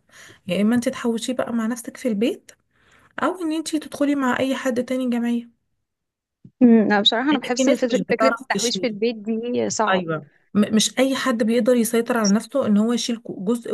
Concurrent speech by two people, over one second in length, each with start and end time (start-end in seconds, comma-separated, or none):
7.3-9.0